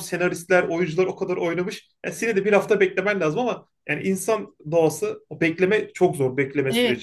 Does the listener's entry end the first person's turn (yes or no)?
yes